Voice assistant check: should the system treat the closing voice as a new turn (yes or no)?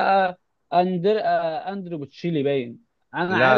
no